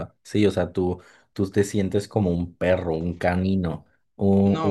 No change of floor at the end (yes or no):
no